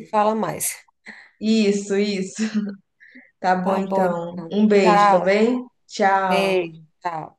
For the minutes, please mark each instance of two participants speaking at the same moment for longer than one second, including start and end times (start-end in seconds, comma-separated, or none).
3.6-5.4